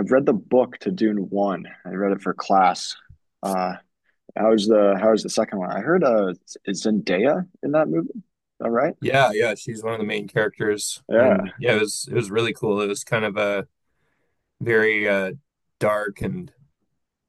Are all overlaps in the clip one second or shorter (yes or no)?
yes